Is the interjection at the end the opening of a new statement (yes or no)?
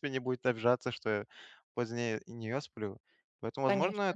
no